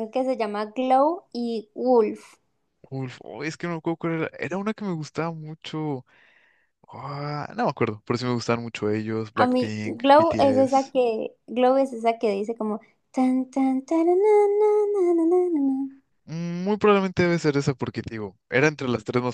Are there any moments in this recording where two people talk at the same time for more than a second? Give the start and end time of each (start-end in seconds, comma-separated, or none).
9.3-10.9